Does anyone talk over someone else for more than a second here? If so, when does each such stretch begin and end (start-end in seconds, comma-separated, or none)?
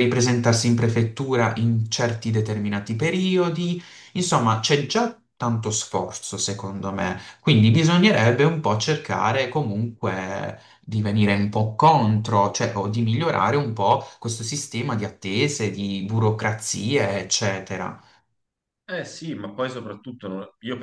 none